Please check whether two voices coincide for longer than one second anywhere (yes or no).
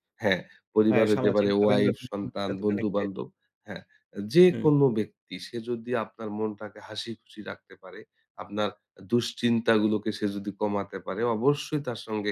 yes